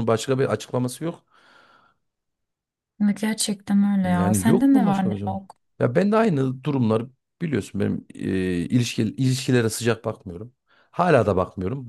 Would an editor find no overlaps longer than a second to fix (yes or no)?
no